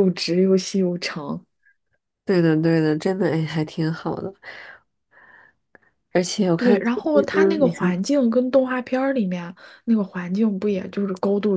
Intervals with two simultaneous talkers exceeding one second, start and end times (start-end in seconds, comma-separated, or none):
6.6-8.0